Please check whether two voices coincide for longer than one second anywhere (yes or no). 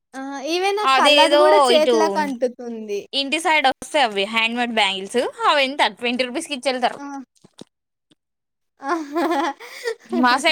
no